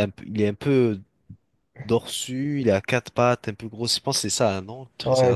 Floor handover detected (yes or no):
yes